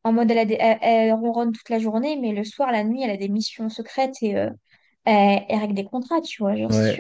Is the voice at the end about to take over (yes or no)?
yes